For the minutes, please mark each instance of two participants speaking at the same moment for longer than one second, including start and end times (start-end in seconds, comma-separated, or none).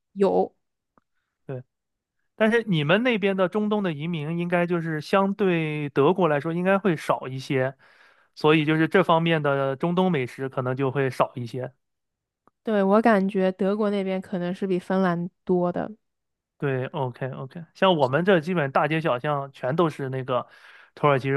none